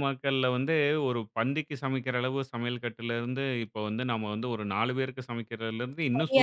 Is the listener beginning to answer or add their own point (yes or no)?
yes